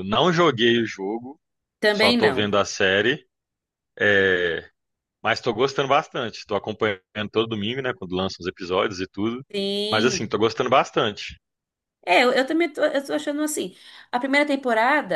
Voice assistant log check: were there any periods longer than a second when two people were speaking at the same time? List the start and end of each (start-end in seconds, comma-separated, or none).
none